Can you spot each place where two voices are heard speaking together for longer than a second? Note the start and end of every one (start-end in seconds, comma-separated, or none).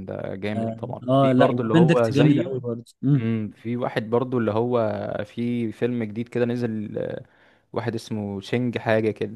0.6-2.5